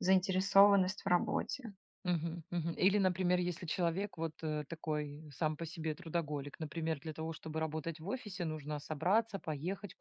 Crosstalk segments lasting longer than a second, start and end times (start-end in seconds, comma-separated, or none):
none